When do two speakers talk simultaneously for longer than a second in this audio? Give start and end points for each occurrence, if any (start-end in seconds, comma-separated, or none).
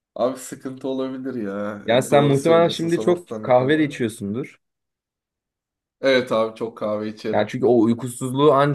1.9-4.0